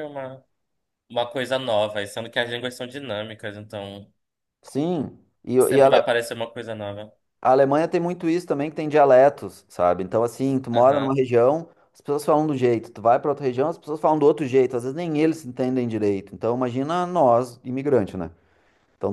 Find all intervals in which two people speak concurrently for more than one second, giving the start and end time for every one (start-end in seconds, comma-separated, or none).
none